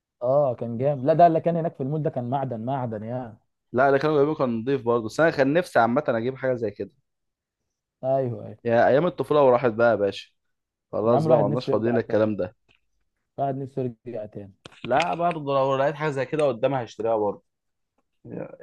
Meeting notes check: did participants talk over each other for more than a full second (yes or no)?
yes